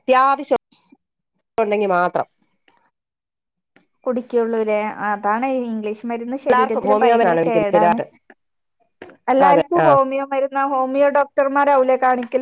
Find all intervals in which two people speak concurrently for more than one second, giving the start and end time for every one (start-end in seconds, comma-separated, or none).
6.5-8.0